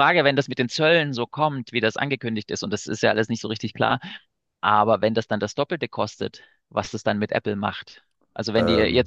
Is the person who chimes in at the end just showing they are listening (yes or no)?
yes